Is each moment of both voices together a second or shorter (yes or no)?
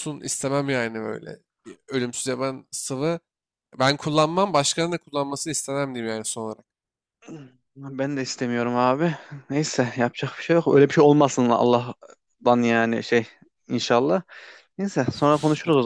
yes